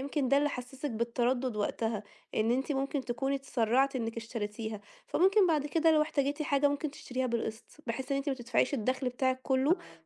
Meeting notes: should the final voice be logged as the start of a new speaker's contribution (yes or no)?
no